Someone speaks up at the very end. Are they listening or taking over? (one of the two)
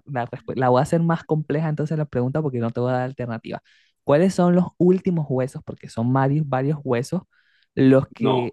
listening